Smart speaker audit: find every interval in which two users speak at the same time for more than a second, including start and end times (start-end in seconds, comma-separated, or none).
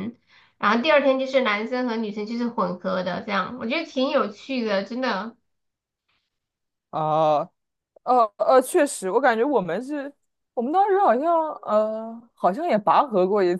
none